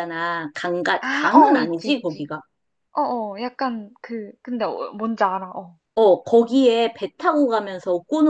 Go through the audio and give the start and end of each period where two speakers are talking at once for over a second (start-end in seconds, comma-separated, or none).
1.0-2.3